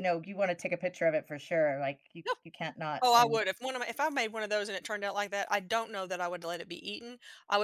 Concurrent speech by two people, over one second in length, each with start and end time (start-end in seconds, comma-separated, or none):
none